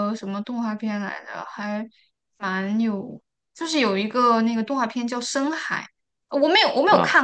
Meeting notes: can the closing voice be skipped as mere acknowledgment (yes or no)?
yes